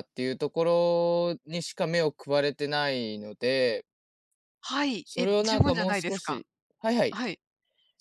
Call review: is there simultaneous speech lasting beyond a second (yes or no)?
yes